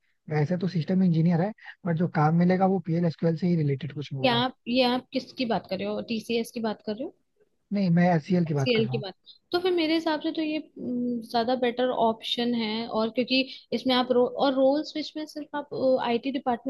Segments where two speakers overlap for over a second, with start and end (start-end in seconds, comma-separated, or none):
none